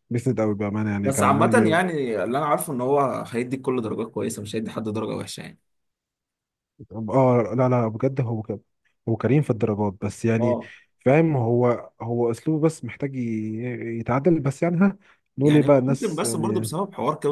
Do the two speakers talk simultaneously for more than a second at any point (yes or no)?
yes